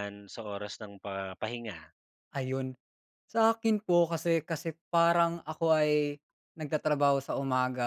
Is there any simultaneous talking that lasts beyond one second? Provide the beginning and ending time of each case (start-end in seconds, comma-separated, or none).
none